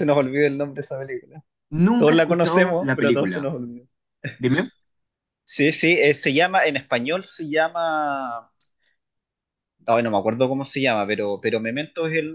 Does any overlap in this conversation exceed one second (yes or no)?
yes